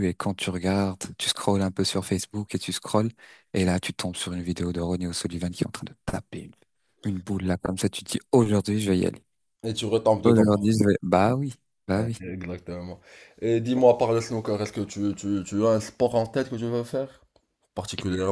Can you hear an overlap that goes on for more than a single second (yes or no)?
no